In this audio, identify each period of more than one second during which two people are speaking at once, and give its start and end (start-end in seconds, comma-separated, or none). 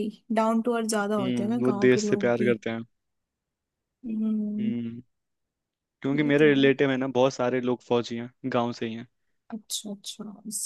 1.2-2.5